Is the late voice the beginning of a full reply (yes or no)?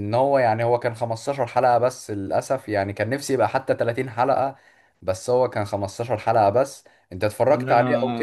yes